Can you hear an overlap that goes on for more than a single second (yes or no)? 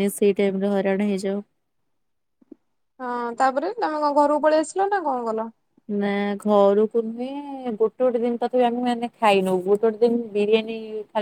no